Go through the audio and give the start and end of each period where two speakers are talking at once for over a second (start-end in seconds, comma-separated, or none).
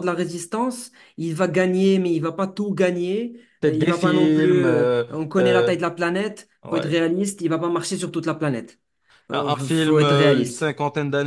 3.6-5.7, 9.3-10.7